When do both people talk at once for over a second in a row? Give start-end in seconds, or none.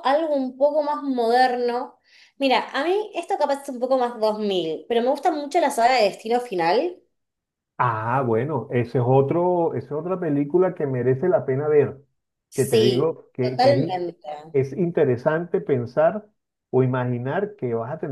12.6-13.8